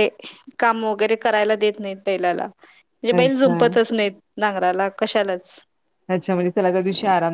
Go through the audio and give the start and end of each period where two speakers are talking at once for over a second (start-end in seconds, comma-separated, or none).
none